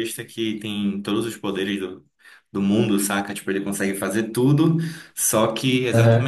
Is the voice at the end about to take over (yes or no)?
no